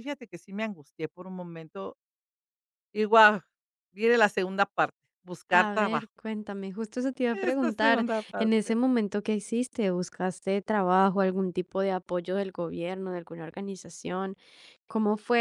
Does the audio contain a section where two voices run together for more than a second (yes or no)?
yes